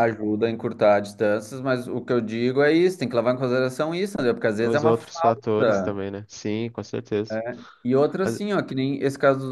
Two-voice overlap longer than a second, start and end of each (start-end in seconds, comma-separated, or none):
4.6-6.0